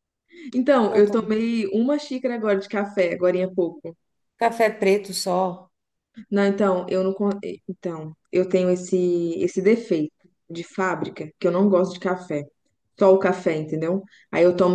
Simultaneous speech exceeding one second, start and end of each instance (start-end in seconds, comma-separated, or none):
none